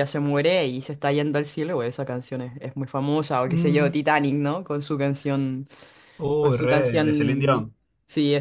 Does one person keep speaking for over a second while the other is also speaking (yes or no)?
yes